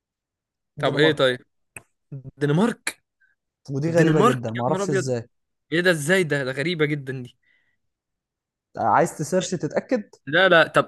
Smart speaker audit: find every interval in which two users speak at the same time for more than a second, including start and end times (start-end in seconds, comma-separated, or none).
3.9-5.2